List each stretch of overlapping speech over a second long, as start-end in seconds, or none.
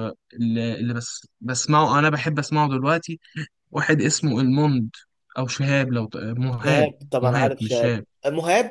6.5-8.1